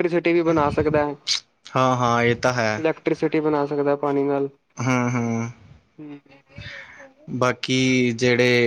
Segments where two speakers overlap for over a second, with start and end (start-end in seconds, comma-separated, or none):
none